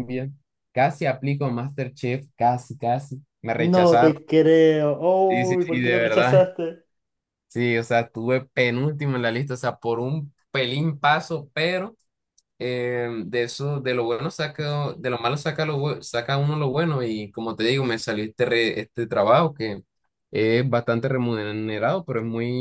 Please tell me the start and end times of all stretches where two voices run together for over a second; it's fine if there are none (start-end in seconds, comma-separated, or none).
5.3-6.5